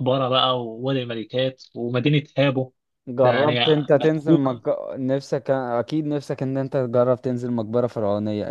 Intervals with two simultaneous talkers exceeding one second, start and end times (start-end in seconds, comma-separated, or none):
3.2-4.6